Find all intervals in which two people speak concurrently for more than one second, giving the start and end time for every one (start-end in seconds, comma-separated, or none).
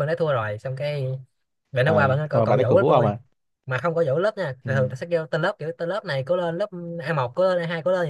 1.8-3.1